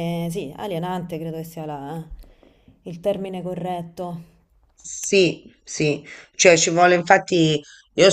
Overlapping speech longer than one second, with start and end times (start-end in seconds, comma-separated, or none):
none